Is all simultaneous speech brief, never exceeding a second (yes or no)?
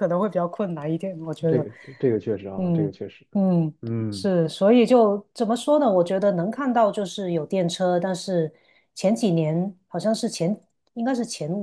yes